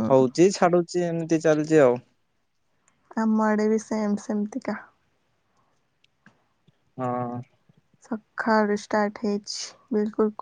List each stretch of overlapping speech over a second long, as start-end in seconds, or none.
none